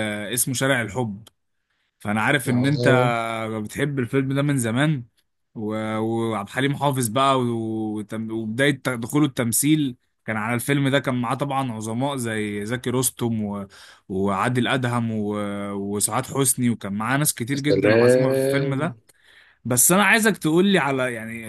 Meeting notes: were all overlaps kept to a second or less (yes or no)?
no